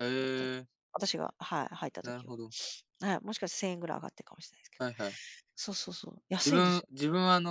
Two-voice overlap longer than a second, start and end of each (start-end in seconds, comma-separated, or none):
none